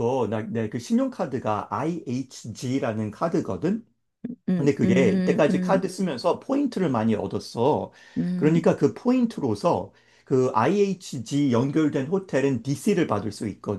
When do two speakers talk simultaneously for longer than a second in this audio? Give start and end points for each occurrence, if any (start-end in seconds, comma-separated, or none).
4.6-5.9